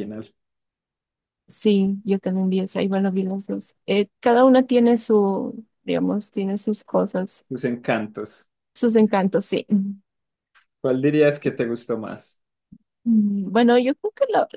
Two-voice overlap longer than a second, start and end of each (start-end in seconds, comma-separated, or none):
none